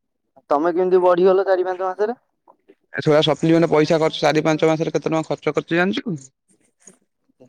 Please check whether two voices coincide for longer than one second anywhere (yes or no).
no